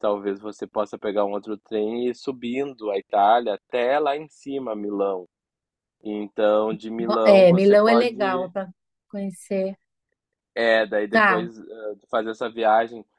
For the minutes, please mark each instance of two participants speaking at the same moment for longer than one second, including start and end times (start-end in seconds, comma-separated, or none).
7.0-8.5